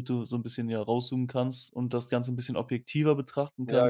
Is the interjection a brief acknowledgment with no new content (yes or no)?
yes